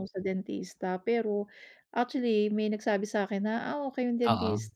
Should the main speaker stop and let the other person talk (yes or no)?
no